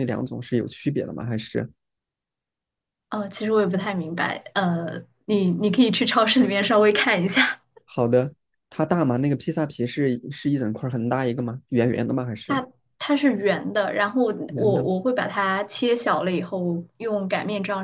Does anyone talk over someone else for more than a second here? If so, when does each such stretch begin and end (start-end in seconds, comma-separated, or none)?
none